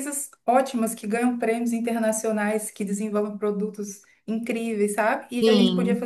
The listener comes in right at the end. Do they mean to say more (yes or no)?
no